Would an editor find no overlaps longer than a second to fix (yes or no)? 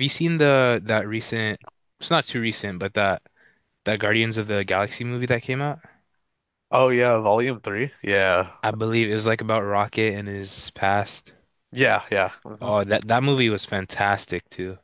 yes